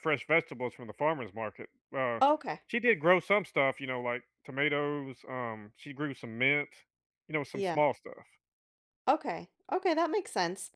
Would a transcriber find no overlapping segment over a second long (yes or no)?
yes